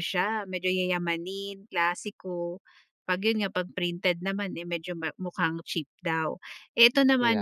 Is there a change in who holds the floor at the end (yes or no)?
no